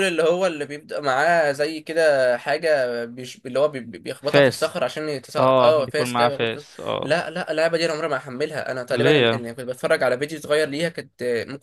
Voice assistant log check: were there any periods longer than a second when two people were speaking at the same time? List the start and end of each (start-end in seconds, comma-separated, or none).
5.4-7.2